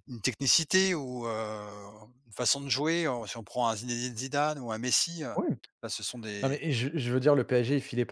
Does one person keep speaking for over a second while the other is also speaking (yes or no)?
no